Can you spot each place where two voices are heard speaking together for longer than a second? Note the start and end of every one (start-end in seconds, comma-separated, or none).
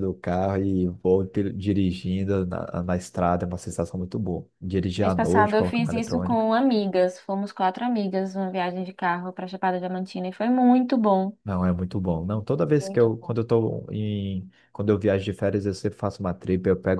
5.0-6.5